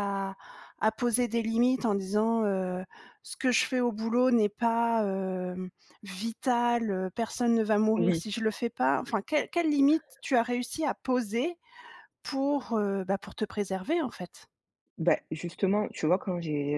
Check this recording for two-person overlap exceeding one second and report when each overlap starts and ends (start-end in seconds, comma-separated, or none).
none